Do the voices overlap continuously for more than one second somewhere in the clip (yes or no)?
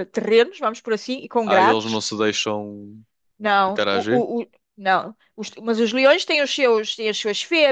no